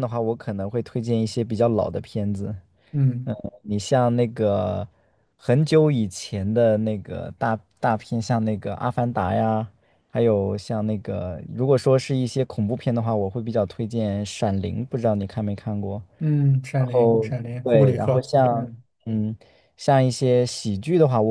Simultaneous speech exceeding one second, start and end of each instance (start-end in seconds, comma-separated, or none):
16.7-18.7